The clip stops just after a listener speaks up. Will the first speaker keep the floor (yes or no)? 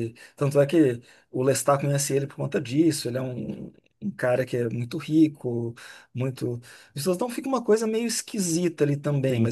yes